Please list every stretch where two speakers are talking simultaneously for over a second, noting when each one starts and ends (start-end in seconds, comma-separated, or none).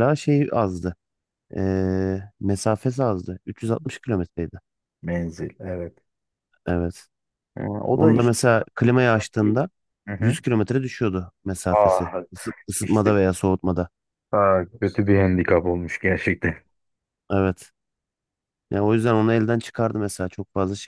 none